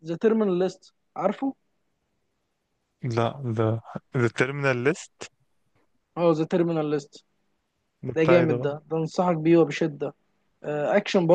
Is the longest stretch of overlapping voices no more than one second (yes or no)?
yes